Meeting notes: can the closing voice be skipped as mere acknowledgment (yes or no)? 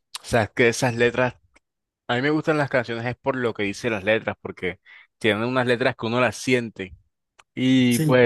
yes